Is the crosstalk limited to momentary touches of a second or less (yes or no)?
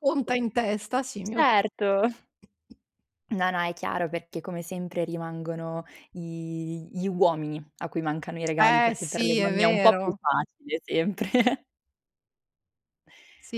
no